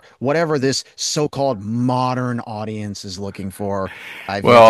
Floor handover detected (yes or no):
yes